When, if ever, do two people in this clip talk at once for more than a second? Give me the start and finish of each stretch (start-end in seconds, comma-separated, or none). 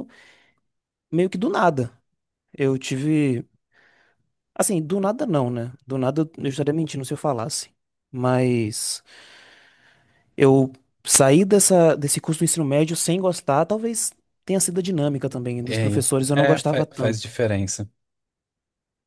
15.7-17.3